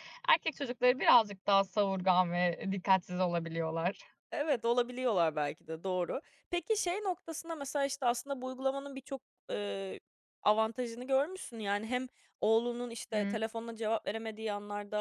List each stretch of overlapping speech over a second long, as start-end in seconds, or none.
none